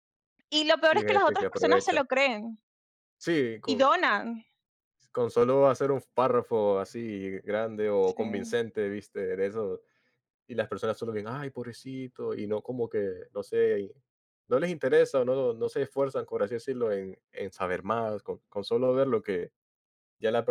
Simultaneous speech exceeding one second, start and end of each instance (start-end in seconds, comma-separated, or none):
0.8-2.0